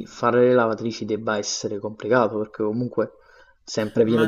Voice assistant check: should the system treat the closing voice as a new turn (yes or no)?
yes